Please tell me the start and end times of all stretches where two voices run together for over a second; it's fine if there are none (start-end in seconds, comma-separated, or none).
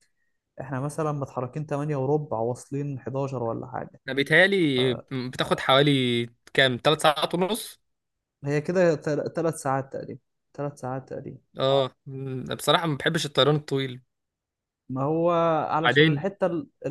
none